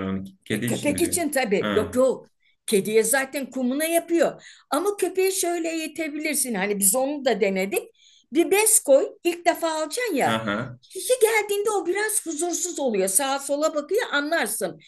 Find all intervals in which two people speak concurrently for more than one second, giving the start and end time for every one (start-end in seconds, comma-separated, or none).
0.5-2.0